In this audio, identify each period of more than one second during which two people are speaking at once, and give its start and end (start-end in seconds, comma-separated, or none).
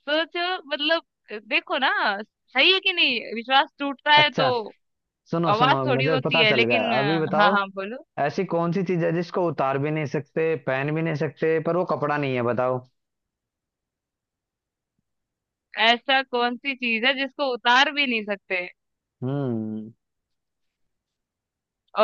5.5-7.5